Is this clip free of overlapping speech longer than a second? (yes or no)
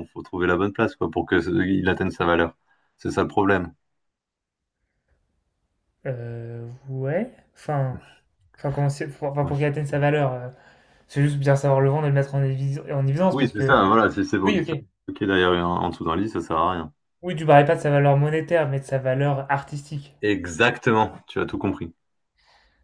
yes